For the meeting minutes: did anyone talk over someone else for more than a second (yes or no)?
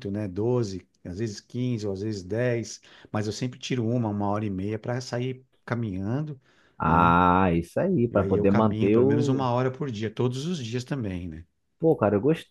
yes